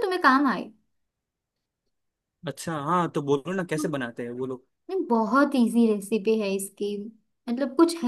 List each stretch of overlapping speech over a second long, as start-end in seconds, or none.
none